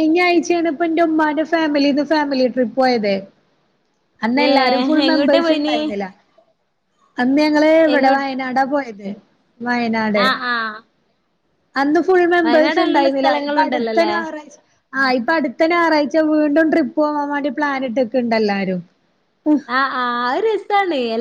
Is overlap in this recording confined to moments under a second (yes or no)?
no